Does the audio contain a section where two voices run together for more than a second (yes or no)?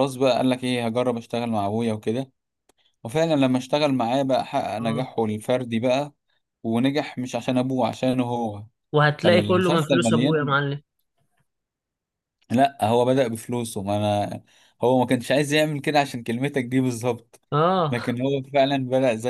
yes